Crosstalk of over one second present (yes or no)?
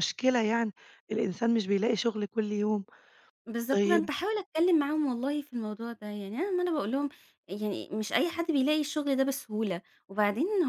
no